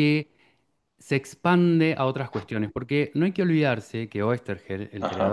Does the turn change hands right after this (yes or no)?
no